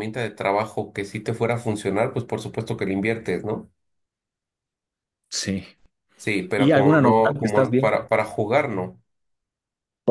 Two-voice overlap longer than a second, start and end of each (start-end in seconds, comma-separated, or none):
6.5-8.0